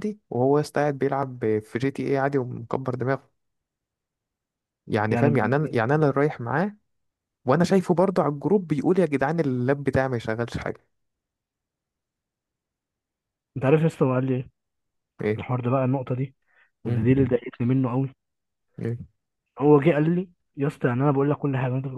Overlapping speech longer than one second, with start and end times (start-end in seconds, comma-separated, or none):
none